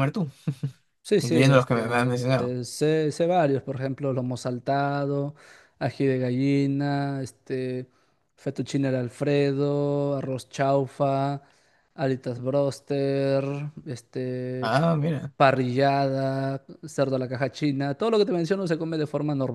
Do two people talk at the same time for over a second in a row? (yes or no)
yes